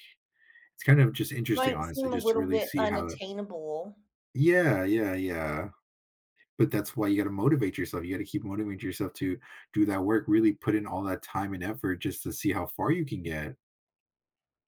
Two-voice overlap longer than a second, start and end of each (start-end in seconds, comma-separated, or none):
1.5-3.2